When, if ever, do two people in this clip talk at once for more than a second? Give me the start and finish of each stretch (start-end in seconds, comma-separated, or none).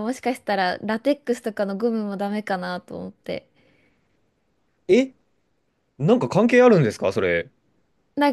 none